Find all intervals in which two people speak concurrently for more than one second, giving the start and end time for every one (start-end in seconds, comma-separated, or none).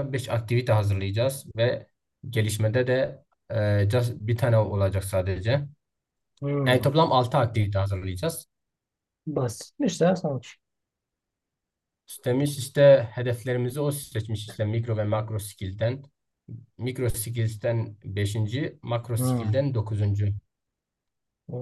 none